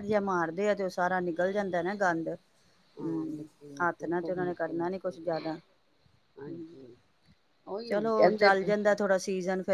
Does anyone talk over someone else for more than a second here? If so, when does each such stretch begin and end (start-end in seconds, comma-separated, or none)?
3.0-5.5